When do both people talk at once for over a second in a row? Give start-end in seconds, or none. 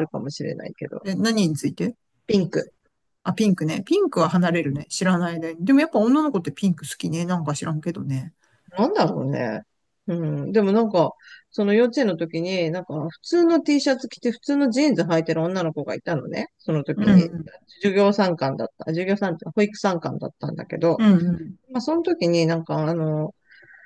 none